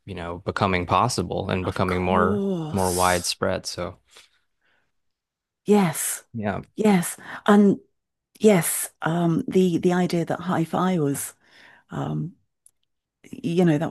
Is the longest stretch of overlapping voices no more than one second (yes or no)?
no